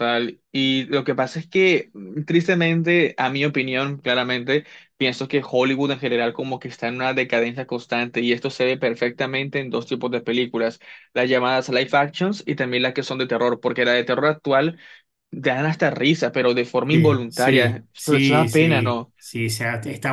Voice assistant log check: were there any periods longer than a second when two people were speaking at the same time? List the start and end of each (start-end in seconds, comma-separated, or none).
16.9-19.1